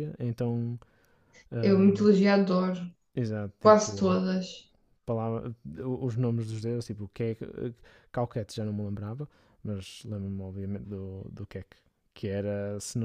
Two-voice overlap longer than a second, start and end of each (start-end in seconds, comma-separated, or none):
none